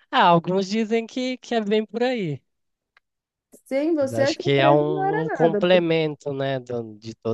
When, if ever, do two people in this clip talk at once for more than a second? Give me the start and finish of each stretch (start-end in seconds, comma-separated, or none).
4.0-5.8